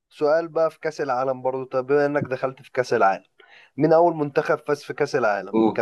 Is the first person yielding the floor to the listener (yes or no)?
no